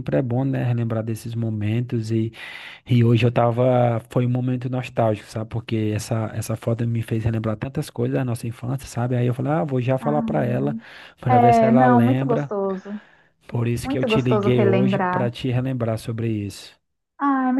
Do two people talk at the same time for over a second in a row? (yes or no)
yes